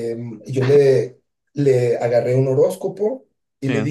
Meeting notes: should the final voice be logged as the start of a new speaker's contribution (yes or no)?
no